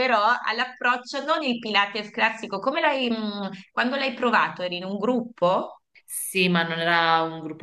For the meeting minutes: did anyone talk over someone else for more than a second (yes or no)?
no